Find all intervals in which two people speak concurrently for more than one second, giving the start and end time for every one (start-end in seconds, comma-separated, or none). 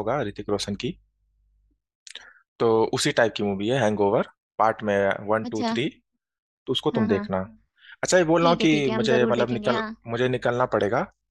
8.4-9.9